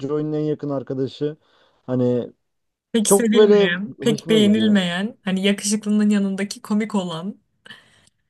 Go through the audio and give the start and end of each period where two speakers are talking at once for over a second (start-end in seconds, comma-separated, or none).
3.0-4.8